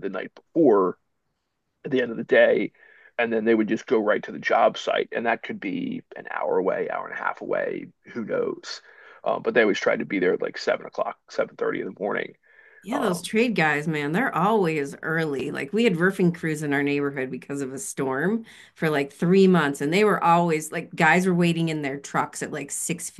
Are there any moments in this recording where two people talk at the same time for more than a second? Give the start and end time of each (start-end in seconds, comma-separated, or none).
none